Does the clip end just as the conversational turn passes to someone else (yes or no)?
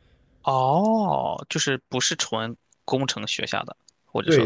yes